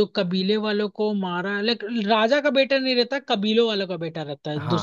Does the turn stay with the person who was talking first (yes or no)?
no